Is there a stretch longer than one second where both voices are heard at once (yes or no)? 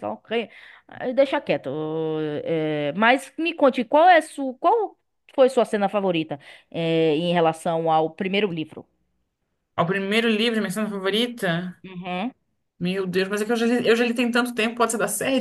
no